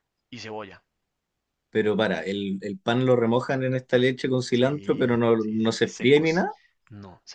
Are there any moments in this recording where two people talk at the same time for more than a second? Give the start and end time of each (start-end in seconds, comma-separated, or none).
4.5-6.2